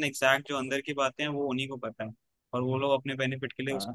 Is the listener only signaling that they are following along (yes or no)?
yes